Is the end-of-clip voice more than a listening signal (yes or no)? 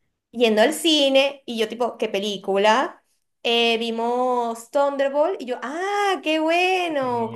no